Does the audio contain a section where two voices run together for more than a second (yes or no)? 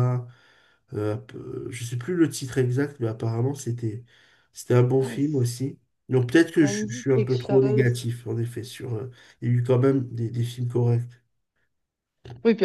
yes